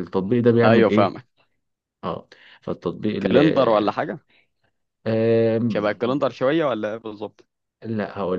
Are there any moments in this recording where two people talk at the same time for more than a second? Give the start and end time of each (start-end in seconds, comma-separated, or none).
none